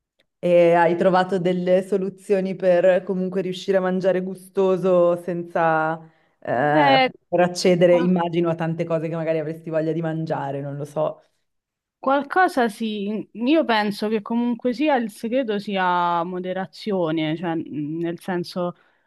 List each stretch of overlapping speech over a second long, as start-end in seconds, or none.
none